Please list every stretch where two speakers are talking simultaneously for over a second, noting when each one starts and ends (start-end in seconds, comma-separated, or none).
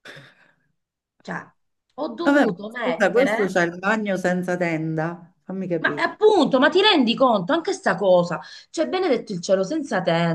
2.2-3.5